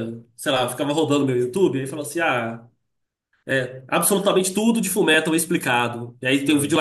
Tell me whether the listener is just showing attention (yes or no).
yes